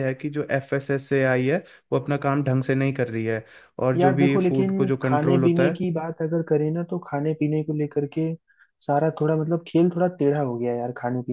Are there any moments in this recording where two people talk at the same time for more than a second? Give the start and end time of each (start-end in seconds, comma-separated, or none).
4.0-5.8